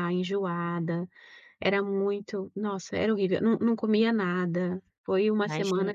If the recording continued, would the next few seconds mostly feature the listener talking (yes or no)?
yes